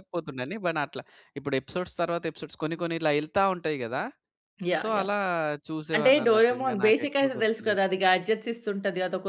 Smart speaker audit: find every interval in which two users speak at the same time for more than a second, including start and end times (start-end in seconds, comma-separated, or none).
6.0-7.8